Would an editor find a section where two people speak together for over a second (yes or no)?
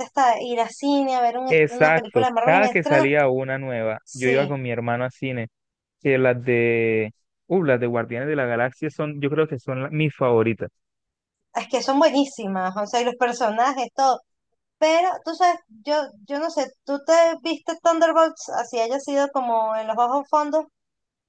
yes